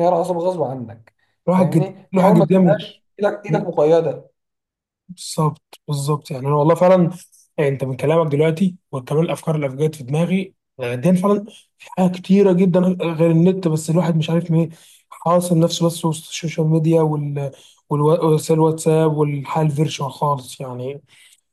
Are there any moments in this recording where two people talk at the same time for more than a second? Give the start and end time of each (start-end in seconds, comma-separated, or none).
1.6-2.8